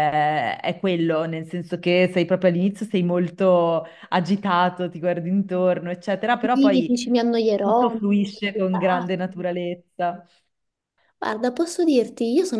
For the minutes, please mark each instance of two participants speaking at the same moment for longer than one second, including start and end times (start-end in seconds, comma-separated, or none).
7.6-9.4